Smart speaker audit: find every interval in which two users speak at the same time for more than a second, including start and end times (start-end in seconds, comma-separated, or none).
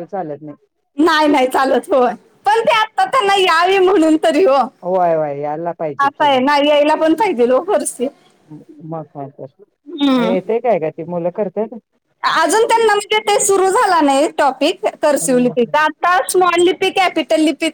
none